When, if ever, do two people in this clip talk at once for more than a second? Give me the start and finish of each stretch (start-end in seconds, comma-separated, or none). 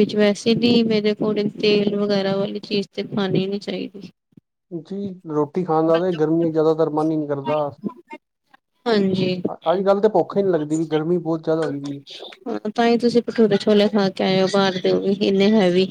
none